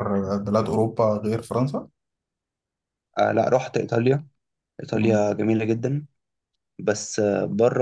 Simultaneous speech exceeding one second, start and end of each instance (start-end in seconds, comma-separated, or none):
none